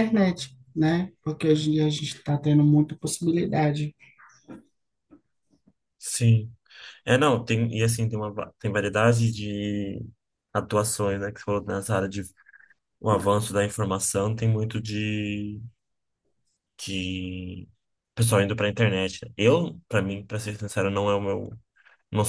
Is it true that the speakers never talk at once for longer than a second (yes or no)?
yes